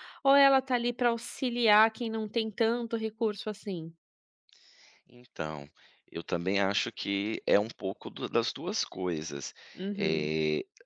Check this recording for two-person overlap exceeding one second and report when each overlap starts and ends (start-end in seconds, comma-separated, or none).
none